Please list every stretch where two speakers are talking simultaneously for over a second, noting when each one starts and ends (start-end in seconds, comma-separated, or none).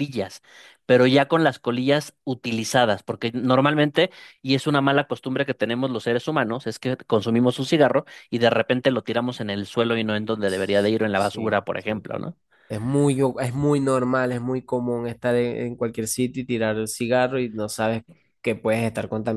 10.4-12.1